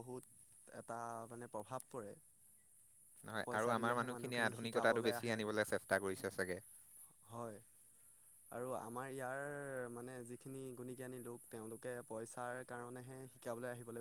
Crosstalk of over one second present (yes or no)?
yes